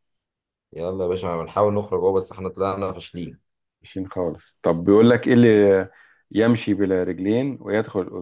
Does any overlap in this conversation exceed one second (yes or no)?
no